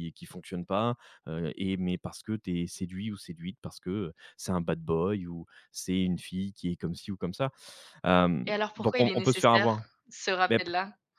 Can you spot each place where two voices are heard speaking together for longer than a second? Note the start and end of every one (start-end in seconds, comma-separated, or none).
8.4-9.8